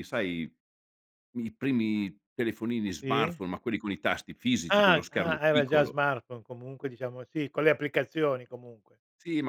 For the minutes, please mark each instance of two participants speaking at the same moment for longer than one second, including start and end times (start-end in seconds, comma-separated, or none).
4.7-6.0